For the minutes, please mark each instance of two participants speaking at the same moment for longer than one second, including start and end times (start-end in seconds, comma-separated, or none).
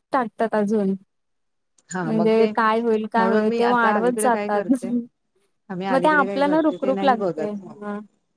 3.1-4.7, 5.9-7.5